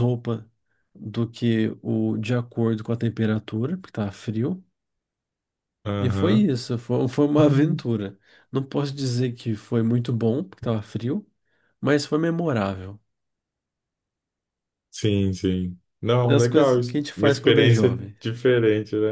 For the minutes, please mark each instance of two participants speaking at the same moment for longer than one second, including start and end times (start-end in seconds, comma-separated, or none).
16.3-18.1